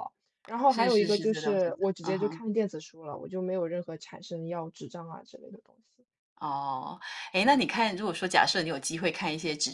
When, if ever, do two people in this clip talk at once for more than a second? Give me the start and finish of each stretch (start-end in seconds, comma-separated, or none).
0.7-2.4